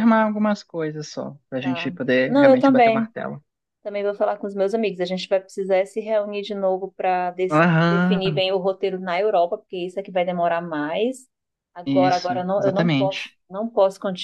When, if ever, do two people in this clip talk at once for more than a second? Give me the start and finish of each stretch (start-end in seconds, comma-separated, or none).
1.6-3.1, 11.8-13.4